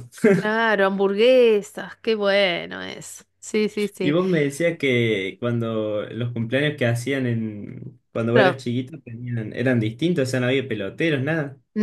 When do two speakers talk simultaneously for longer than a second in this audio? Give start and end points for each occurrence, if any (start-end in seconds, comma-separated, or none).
none